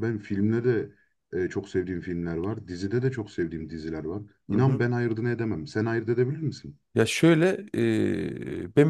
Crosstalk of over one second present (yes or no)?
no